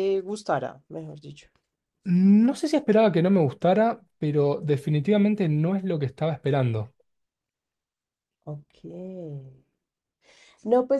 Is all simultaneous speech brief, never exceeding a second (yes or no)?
yes